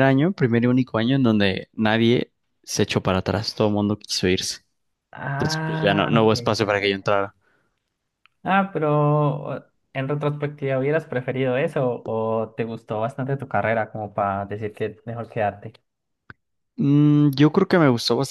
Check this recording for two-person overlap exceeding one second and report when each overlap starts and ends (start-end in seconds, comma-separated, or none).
5.3-7.1